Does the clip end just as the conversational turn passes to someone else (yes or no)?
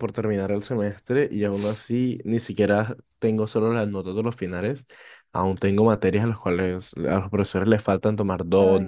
no